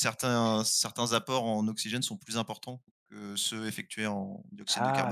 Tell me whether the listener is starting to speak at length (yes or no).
yes